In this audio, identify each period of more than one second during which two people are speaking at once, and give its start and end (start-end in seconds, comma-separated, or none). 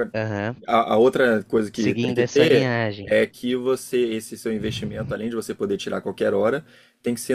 1.7-3.1